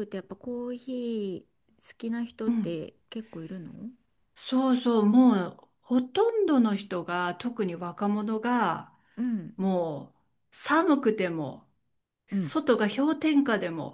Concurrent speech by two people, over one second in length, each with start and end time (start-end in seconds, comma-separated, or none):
none